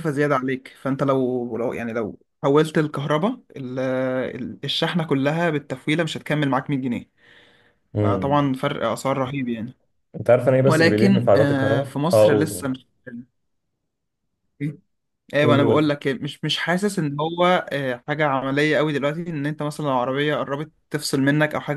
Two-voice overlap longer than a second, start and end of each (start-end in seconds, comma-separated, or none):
10.7-12.7